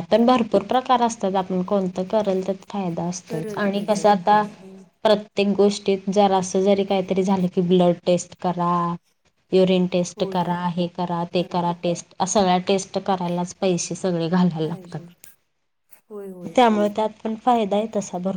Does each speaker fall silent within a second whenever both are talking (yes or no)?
no